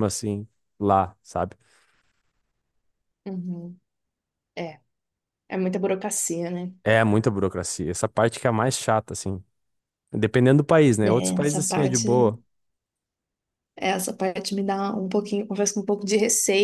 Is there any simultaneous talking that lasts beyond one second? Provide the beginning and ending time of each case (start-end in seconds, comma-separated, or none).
11.0-12.3